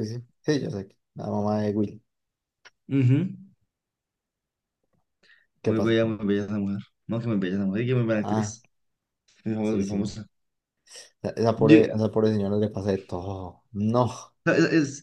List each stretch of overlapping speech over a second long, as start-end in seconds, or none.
none